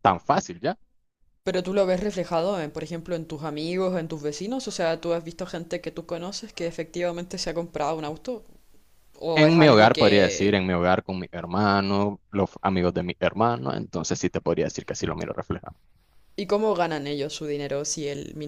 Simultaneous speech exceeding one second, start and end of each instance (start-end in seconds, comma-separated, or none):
9.3-10.6